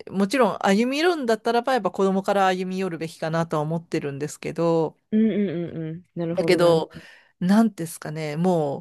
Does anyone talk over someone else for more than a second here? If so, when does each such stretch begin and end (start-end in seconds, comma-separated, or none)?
none